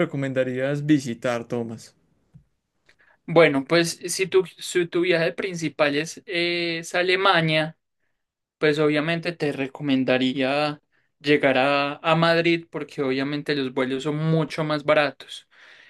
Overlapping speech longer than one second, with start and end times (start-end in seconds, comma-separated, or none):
none